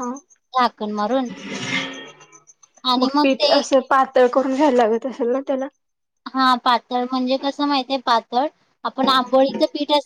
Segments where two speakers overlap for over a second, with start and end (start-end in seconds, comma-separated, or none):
none